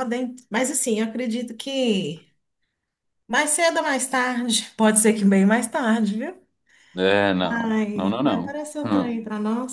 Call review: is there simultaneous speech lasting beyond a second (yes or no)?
yes